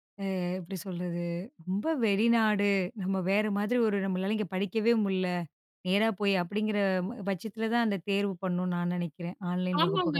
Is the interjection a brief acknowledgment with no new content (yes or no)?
no